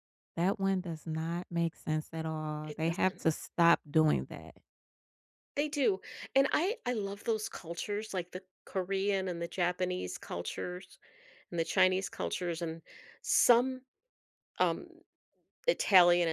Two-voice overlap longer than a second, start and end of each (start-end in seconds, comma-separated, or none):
none